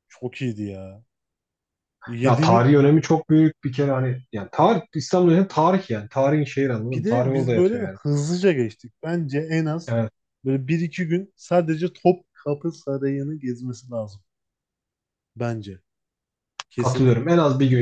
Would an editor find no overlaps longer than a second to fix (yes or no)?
no